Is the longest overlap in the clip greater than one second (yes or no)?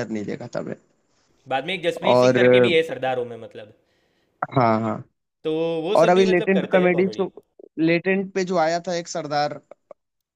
yes